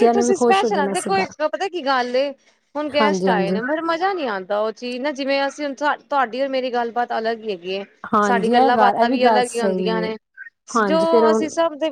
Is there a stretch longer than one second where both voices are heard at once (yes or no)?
yes